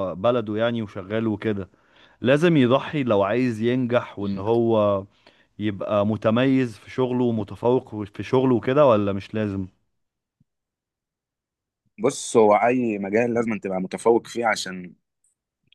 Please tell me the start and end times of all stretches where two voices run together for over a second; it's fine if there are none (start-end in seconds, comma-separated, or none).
none